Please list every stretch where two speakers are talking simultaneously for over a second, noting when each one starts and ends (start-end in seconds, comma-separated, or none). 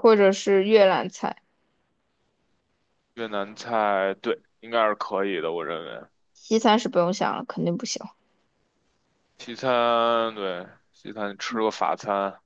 none